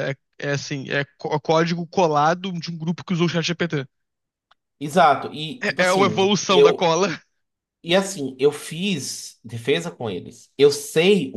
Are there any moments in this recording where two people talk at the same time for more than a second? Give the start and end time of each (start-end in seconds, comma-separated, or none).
5.6-6.9